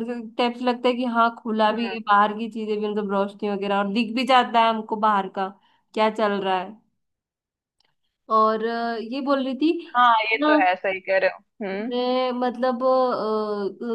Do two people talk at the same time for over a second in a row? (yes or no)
no